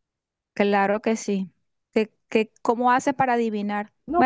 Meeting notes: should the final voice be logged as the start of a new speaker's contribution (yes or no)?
yes